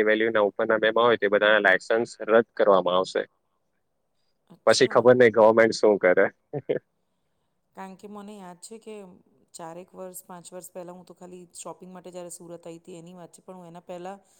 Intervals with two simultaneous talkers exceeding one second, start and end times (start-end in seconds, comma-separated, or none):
none